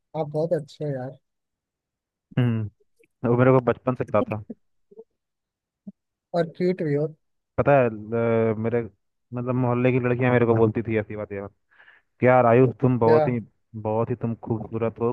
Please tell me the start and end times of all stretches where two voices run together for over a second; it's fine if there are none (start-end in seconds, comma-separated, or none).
none